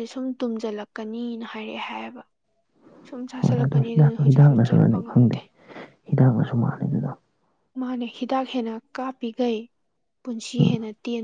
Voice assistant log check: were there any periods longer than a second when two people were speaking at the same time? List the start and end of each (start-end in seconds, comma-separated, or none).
3.4-5.4